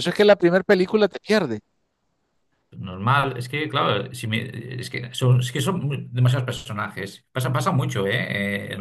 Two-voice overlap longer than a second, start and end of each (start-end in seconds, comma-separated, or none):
none